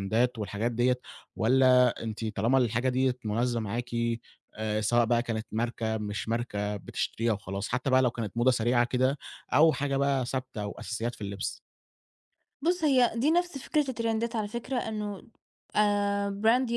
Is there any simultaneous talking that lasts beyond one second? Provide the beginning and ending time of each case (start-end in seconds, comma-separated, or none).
none